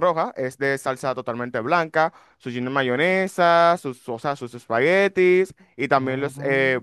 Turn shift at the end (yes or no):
no